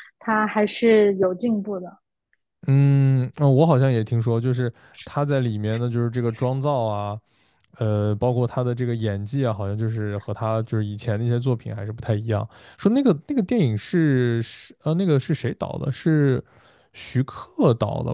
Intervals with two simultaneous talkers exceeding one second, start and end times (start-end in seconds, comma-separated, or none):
none